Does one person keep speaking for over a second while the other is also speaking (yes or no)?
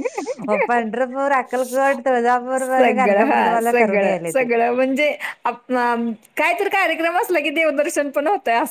yes